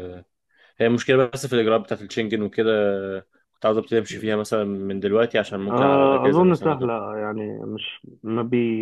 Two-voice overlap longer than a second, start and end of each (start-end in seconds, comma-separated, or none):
5.7-6.9